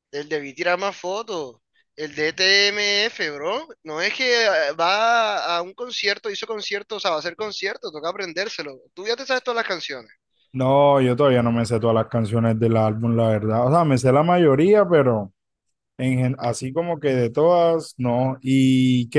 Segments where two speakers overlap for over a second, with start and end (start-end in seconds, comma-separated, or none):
none